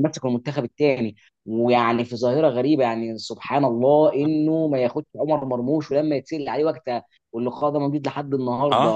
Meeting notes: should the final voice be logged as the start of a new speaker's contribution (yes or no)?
no